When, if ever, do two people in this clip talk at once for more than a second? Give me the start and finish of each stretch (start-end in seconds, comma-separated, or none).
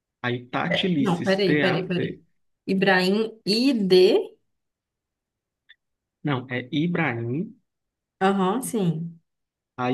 0.7-2.2